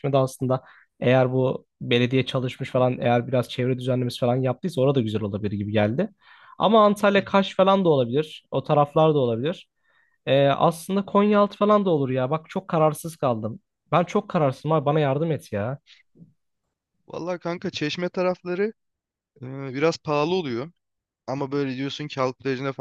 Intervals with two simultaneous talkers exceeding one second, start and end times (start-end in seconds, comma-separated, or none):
none